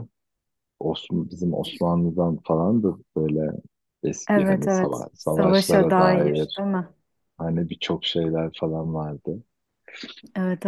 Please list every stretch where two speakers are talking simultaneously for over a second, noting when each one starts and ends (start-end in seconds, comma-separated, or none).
4.3-6.6